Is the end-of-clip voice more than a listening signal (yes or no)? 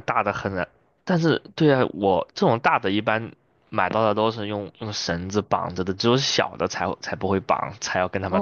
yes